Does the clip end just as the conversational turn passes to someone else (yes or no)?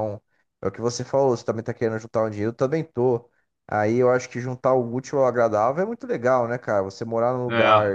no